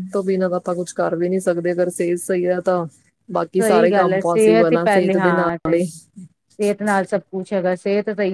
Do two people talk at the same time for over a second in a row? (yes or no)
yes